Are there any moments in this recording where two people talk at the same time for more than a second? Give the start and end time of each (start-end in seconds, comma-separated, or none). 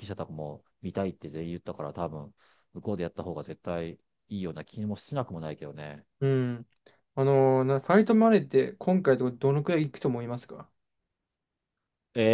none